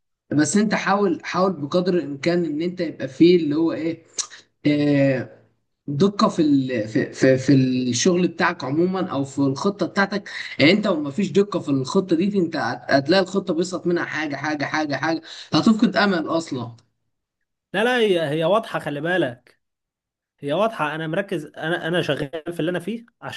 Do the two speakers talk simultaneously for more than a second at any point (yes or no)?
no